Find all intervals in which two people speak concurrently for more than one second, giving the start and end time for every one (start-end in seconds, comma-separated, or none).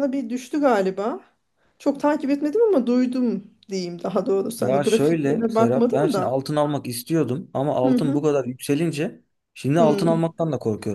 4.6-6.4